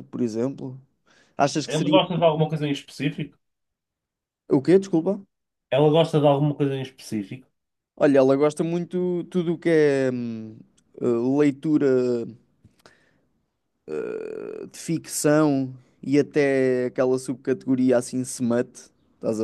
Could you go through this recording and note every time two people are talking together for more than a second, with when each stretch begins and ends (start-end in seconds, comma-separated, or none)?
none